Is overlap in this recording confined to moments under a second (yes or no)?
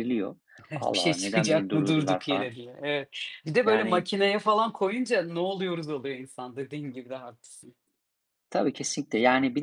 no